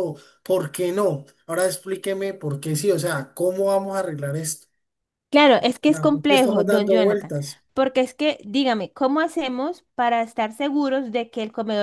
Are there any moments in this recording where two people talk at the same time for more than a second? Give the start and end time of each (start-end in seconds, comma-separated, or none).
5.9-7.3